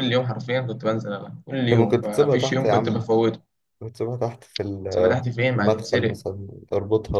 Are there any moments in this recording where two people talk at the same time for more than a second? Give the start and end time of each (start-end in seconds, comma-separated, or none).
1.7-3.1, 4.9-6.2